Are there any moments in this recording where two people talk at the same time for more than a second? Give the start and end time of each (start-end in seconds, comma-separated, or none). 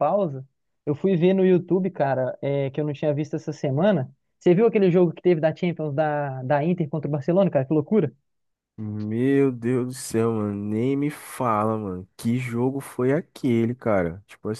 none